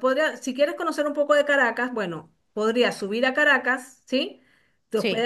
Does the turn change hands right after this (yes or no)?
no